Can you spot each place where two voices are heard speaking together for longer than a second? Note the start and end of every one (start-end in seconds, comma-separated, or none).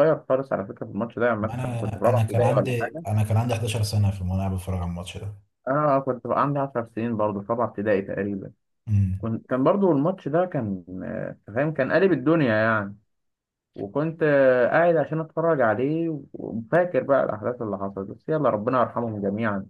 1.4-3.0